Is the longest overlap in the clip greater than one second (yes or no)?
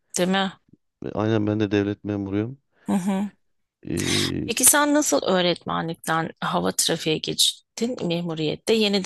no